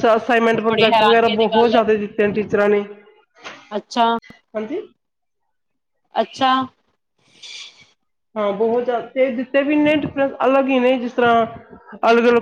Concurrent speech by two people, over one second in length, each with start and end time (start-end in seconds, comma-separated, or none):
0.6-2.0